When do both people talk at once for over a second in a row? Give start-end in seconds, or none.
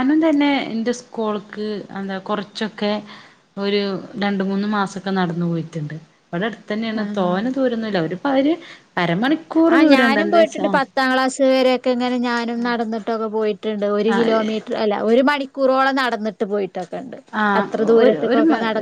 none